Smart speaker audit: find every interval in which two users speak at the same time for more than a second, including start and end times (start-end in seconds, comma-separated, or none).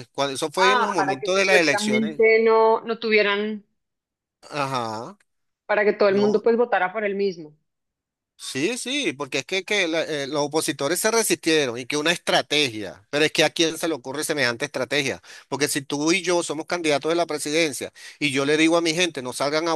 0.6-2.2